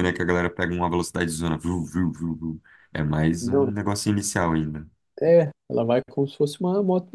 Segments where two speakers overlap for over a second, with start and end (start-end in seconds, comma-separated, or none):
none